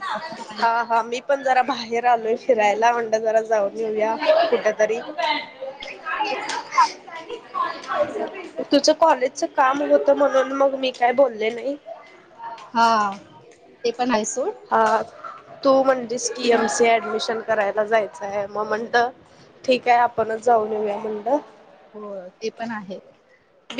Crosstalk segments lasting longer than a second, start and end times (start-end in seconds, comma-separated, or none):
none